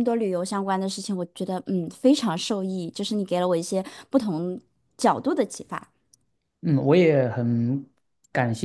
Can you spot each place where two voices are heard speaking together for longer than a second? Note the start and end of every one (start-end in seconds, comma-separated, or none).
none